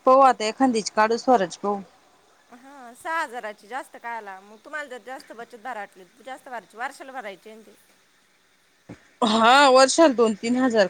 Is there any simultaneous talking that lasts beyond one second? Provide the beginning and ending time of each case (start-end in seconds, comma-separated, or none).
none